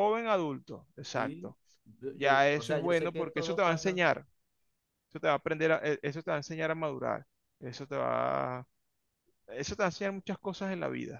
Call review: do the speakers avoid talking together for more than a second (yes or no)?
no